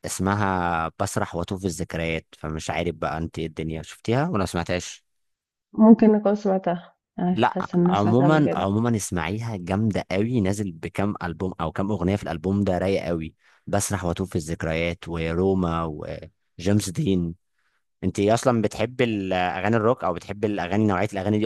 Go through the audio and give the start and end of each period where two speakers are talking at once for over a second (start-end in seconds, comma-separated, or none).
7.3-8.7